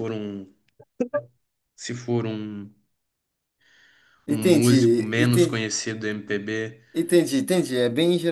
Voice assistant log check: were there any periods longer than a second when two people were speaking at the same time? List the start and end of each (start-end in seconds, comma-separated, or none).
4.3-5.7